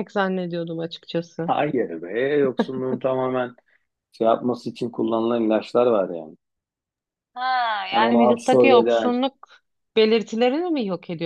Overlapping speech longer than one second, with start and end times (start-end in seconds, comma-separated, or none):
7.9-9.1